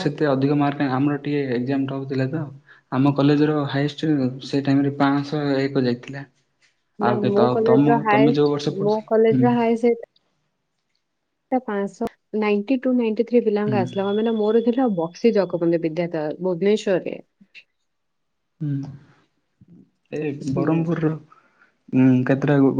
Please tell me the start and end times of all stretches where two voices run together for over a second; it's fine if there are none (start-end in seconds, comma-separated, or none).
7.0-9.4